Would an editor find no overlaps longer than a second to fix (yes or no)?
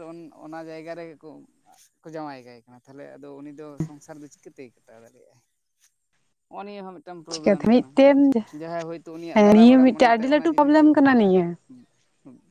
no